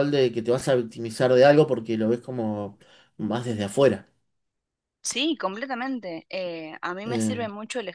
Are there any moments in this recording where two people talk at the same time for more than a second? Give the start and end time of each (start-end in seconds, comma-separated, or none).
none